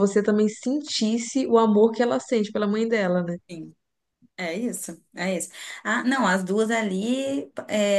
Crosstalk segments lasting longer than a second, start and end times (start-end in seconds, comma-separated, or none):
none